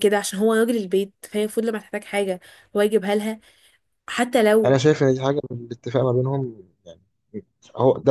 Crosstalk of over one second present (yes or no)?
no